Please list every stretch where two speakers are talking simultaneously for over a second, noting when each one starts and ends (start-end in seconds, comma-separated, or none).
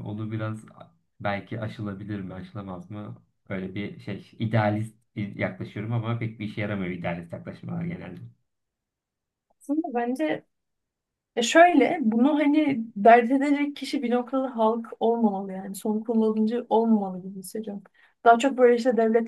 none